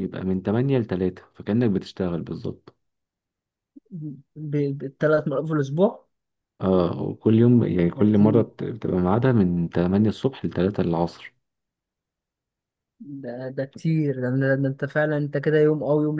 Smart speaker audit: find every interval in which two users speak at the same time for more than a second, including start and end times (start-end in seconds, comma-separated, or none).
none